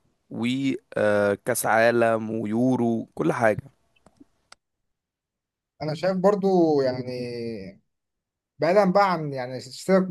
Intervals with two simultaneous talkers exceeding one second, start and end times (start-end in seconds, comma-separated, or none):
none